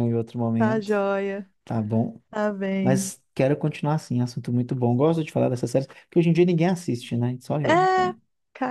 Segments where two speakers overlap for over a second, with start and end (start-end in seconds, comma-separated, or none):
none